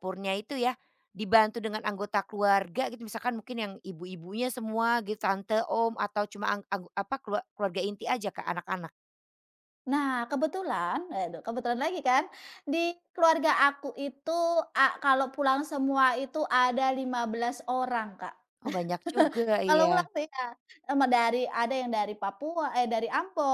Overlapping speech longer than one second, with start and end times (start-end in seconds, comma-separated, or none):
none